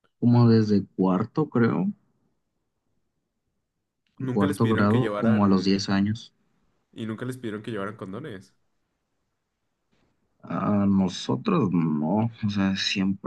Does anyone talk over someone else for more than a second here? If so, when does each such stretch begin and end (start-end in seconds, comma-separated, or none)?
4.3-5.7